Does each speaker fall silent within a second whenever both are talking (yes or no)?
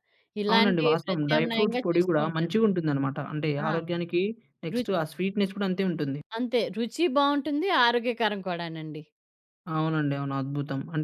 no